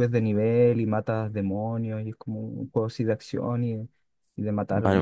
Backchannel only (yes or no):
no